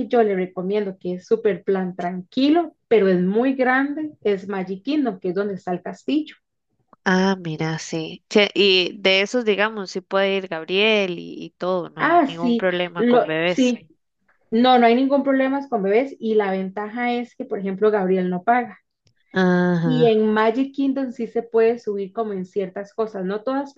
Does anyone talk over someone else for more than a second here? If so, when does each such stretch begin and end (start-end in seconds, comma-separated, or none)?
12.0-13.7